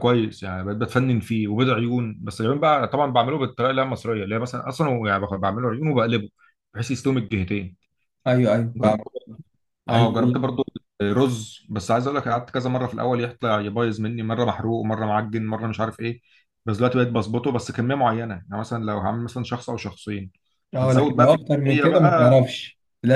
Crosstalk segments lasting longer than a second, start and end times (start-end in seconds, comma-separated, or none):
20.8-22.4